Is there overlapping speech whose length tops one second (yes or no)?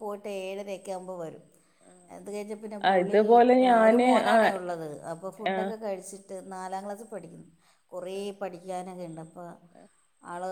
no